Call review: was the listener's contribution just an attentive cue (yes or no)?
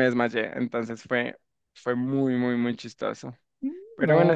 yes